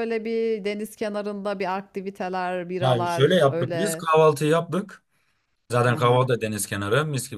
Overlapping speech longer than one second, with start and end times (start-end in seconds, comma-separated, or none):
2.8-4.0